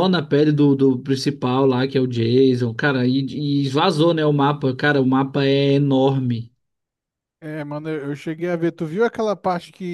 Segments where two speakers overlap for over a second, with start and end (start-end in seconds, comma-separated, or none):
none